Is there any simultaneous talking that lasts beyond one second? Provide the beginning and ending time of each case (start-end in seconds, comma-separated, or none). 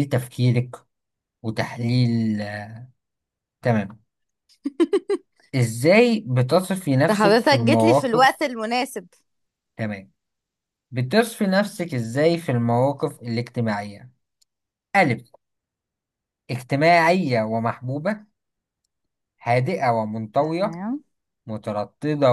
7.1-8.5